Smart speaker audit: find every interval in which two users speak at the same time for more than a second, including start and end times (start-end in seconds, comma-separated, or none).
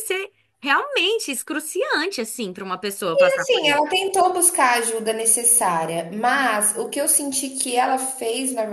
none